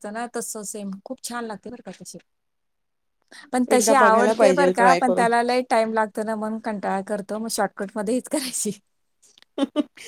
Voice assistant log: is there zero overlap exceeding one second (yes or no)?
no